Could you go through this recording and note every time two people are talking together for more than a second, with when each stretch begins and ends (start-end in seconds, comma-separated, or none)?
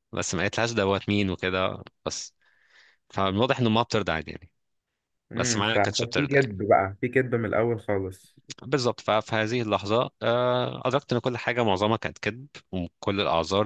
5.4-6.6